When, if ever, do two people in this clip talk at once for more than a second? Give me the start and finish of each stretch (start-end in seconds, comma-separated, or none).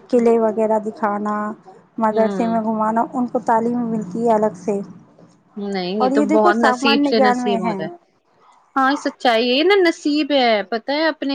6.0-7.6